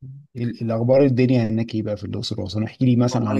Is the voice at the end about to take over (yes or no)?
no